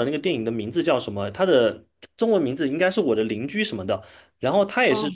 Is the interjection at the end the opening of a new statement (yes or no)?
no